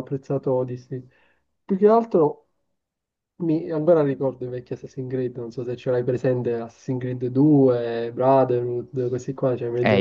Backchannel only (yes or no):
no